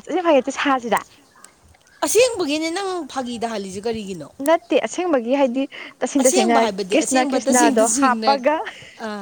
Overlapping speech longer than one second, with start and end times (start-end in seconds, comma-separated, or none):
6.2-8.4